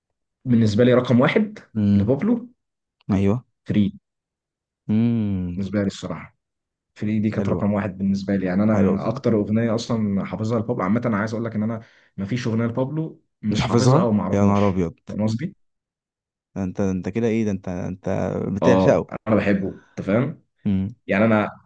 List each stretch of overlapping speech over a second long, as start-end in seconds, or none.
13.5-14.9